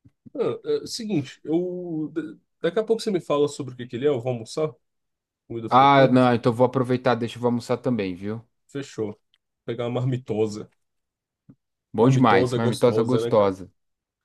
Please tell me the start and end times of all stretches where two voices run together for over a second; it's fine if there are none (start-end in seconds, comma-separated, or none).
12.0-13.5